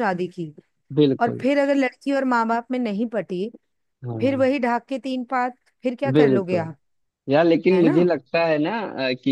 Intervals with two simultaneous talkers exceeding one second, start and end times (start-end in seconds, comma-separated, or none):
none